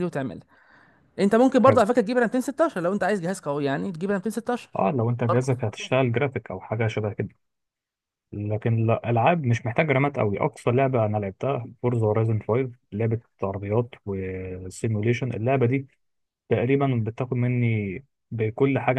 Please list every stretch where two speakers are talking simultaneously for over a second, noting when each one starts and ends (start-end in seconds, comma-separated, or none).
none